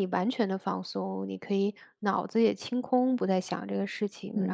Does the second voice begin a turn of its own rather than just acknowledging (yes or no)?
yes